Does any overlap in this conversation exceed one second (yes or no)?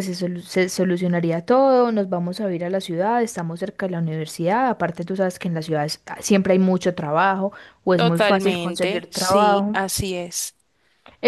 yes